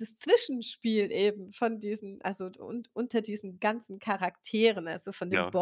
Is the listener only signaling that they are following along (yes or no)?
yes